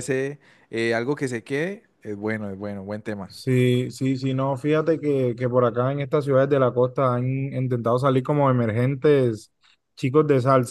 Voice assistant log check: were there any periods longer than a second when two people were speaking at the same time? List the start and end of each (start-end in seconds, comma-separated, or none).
none